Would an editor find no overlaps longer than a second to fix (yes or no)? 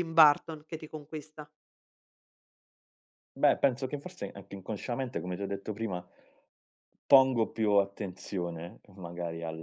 yes